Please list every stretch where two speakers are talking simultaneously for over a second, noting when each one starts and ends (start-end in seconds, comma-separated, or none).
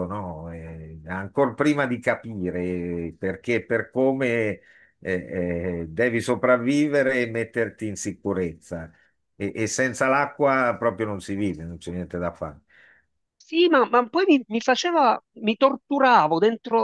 none